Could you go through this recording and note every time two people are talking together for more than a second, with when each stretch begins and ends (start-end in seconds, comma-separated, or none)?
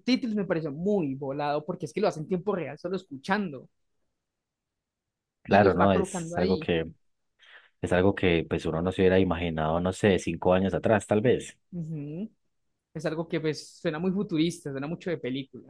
5.5-6.7